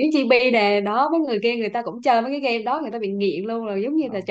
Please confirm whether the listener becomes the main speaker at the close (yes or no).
no